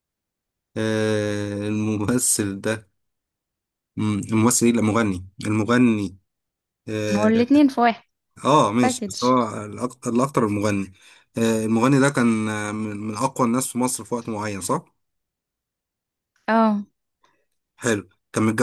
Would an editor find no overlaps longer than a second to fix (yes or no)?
yes